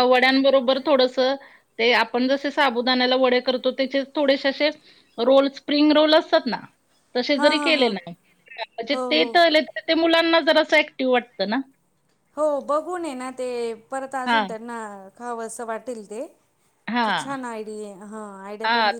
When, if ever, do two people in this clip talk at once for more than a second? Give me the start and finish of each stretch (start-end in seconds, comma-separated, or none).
none